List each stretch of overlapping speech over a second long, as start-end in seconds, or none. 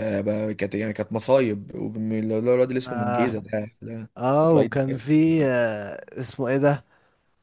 none